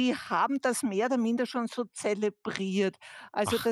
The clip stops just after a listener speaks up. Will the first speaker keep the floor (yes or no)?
yes